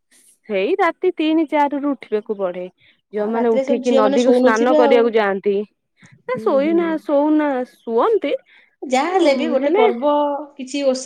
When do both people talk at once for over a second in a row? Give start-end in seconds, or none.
3.2-5.0